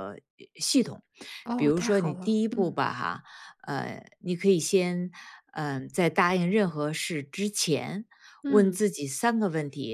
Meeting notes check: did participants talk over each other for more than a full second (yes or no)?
yes